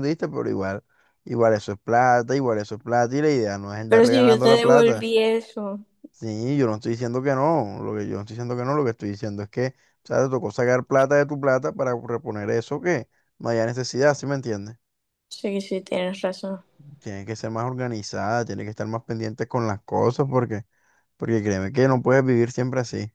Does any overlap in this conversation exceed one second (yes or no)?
yes